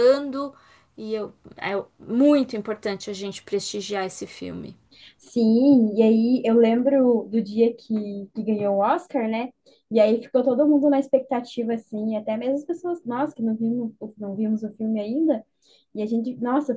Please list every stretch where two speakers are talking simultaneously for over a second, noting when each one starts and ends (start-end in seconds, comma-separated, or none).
none